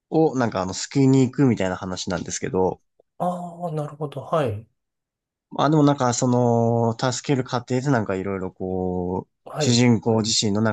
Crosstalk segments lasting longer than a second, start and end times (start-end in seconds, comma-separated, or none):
none